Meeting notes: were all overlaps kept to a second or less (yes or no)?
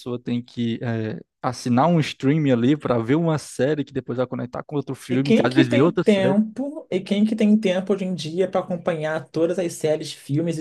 no